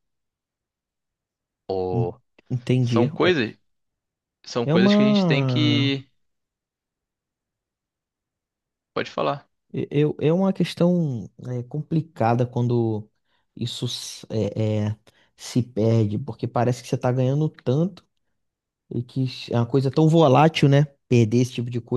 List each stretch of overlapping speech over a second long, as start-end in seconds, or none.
4.7-6.0